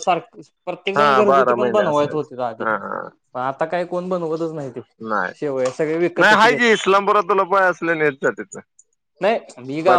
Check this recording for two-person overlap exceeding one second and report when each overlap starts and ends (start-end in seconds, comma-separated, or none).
1.0-2.6